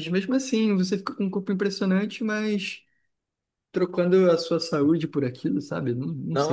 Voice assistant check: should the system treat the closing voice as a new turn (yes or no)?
yes